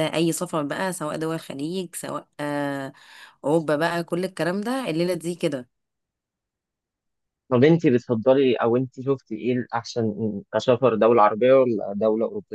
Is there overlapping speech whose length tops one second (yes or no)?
no